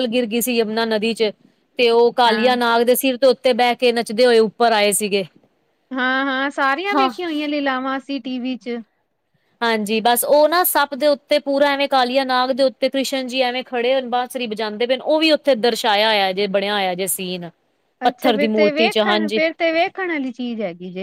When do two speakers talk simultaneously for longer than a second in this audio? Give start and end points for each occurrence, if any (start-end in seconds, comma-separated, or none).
18.1-19.4